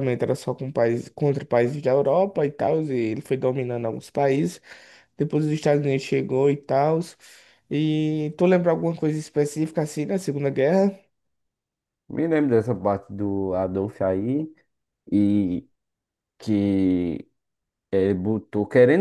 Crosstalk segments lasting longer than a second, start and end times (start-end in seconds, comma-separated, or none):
none